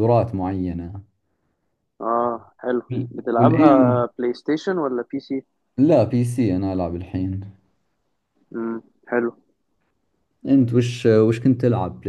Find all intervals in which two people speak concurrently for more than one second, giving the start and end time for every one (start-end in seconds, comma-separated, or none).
none